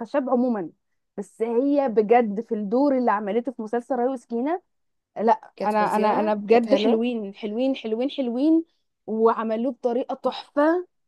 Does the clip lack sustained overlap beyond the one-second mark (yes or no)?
no